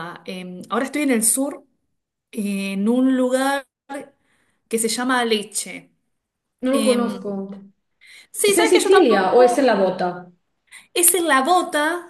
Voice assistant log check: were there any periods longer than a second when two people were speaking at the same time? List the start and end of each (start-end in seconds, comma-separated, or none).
8.5-9.7